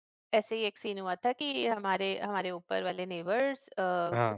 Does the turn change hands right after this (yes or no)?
no